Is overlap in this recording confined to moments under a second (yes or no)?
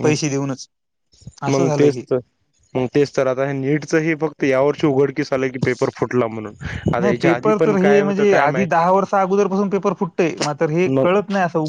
no